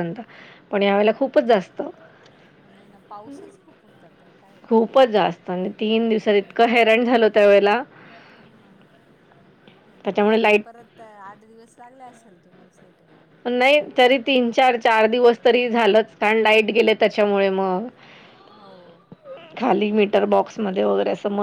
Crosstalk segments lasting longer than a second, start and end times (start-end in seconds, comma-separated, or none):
none